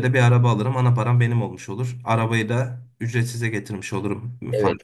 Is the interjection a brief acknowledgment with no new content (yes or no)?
no